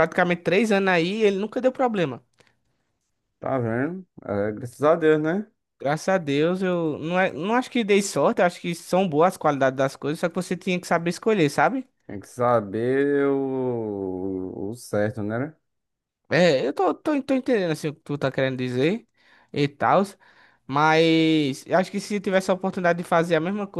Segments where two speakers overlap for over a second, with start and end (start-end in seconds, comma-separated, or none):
none